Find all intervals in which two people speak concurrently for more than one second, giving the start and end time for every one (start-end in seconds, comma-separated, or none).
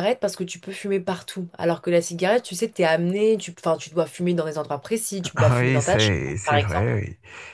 5.5-6.9